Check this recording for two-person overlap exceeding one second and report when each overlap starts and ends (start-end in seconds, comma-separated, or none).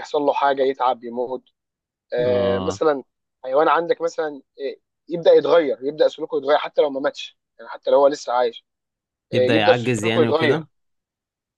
9.3-10.6